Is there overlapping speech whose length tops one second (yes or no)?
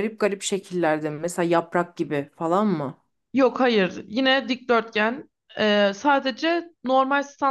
no